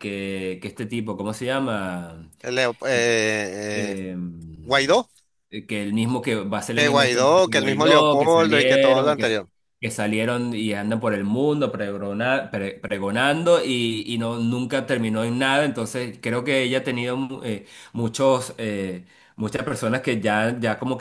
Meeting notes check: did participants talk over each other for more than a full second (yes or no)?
yes